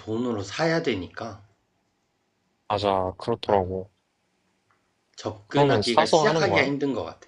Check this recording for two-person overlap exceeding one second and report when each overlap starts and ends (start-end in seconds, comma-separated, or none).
5.5-6.7